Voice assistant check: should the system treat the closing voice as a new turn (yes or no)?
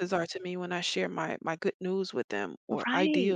yes